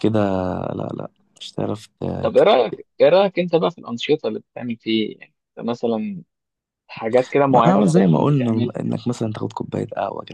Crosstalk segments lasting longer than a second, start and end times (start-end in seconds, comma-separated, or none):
7.5-8.8